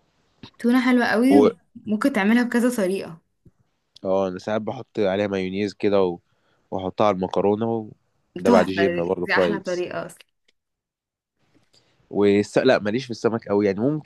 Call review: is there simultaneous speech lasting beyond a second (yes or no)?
yes